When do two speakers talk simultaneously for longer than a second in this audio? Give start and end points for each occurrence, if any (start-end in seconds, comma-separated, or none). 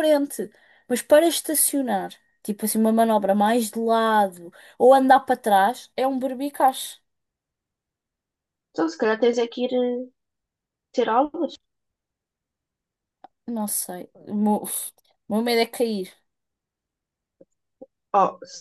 none